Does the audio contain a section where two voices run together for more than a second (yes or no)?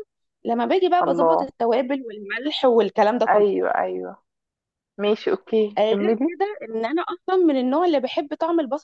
no